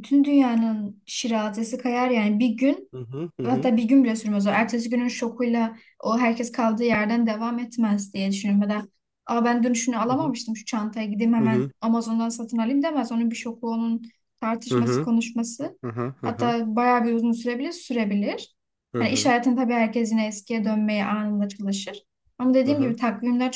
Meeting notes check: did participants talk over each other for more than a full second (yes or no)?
no